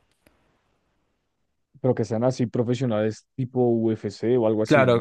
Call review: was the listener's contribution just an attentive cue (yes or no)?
no